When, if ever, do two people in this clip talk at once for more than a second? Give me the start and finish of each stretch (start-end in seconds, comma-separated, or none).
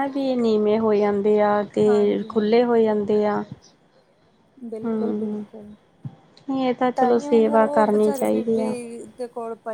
7.0-8.7